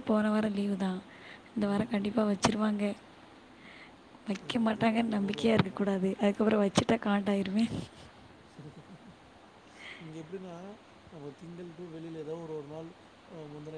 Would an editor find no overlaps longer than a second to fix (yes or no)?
no